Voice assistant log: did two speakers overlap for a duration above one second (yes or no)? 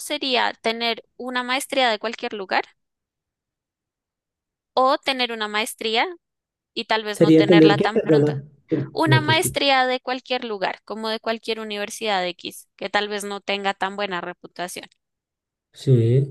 yes